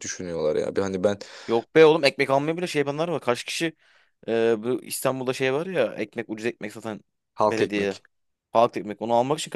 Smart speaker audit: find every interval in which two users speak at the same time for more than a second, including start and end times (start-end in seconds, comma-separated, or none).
none